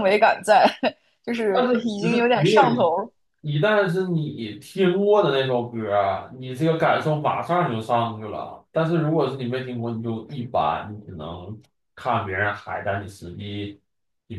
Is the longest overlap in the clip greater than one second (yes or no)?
yes